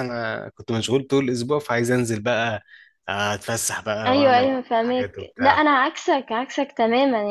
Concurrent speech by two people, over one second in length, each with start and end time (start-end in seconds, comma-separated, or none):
4.1-5.7